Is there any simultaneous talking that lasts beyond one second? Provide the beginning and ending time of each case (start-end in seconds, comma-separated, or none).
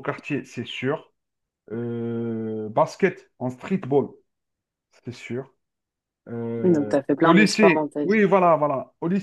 6.6-8.2